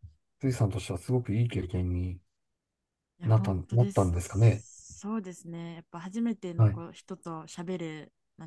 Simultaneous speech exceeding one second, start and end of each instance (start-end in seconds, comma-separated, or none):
3.2-4.7